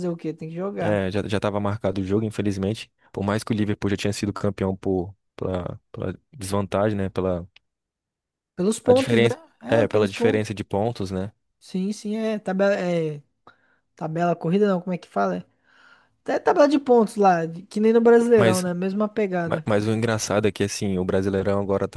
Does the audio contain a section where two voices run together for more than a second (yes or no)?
yes